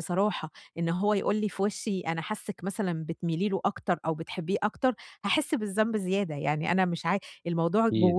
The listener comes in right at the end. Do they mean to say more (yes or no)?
no